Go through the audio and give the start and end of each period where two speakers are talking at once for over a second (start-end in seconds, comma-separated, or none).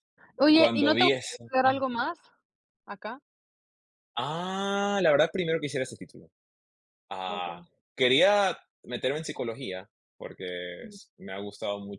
0.5-1.8